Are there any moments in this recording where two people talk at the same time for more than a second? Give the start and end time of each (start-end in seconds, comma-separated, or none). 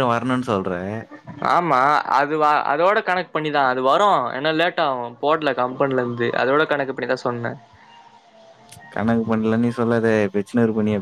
none